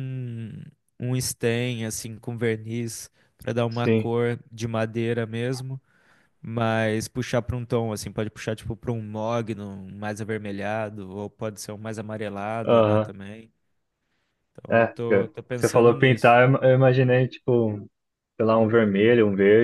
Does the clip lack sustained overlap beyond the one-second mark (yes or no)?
no